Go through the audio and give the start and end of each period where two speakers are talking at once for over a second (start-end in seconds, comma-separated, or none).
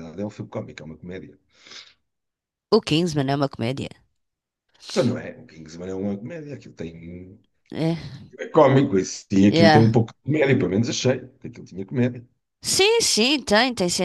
none